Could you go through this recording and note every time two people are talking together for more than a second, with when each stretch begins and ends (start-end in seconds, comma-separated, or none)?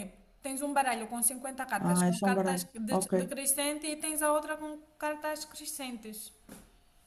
1.8-3.3